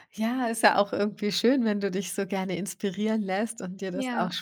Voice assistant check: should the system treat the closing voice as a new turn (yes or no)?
no